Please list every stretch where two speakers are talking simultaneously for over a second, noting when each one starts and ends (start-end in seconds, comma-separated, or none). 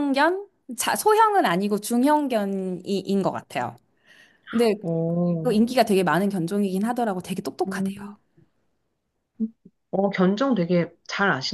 none